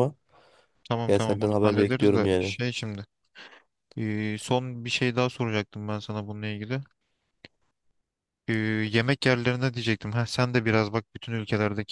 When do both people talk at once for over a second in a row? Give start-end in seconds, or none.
1.1-2.5